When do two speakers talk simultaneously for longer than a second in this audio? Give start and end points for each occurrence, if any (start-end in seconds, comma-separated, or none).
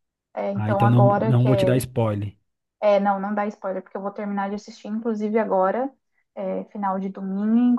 0.5-1.8